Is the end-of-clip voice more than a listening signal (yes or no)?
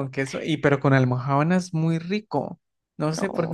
no